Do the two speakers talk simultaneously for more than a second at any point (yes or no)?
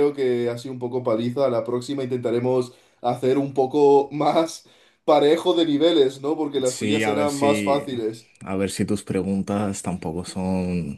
yes